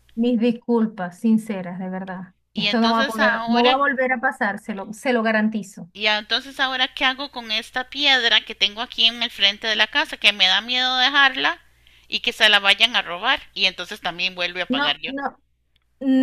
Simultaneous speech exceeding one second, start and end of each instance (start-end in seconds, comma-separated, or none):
2.5-3.8